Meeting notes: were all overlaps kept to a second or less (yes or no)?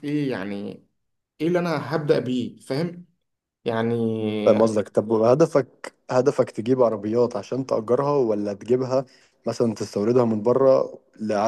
yes